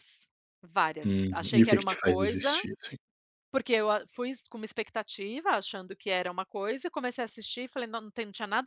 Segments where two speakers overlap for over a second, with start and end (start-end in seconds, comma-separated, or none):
1.1-2.6